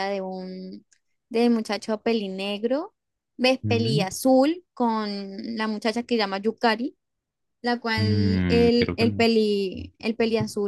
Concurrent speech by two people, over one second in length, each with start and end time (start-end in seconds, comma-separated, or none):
8.0-9.2